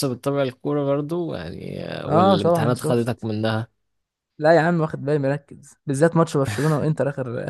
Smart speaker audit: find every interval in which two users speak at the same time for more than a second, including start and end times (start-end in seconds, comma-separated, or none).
2.1-3.3